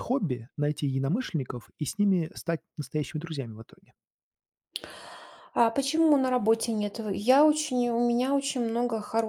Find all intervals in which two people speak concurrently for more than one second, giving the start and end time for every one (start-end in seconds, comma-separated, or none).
none